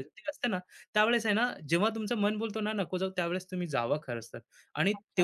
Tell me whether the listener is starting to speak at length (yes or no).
yes